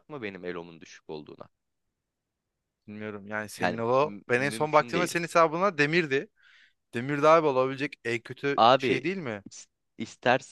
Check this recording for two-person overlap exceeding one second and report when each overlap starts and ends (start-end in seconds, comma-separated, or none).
3.6-5.2